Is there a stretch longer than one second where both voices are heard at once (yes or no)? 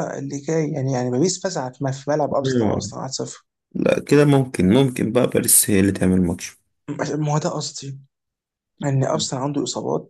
no